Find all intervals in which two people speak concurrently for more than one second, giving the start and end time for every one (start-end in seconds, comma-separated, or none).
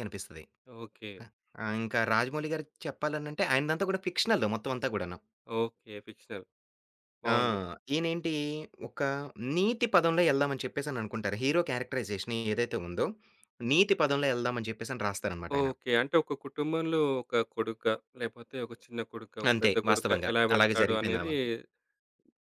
19.5-21.3